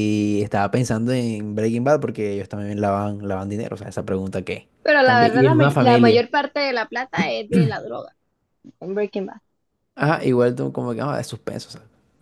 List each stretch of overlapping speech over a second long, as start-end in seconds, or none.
4.8-6.2